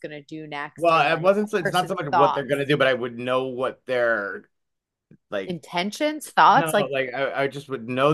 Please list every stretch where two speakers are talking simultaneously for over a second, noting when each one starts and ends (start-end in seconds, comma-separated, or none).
0.8-2.6